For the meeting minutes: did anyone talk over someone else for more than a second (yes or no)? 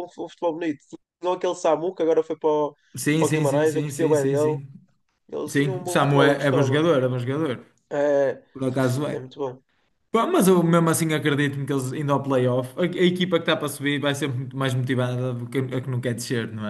yes